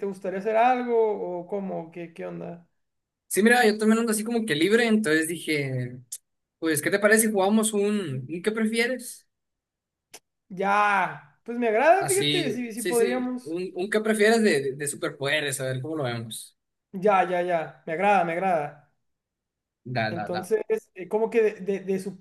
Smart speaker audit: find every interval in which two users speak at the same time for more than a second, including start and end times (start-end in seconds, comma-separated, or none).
12.0-13.6